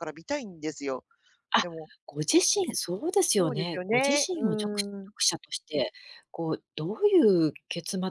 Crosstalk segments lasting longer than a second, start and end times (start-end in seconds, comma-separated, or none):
3.4-5.1